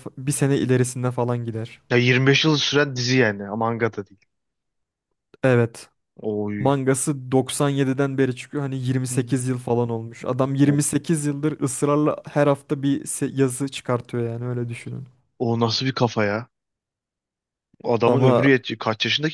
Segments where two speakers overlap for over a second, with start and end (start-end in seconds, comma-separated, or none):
none